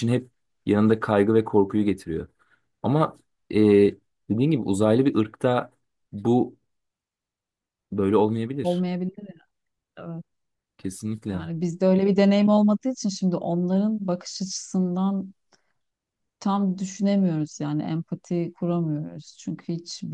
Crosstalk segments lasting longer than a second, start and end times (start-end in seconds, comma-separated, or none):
none